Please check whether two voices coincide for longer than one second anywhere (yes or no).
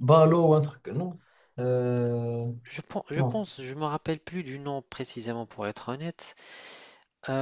no